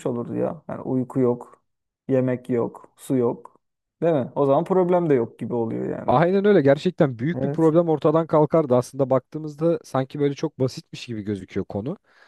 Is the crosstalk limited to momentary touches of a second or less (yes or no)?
yes